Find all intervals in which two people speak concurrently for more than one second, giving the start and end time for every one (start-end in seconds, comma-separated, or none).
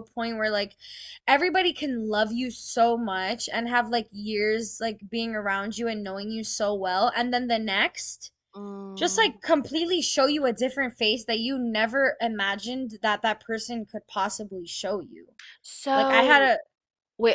none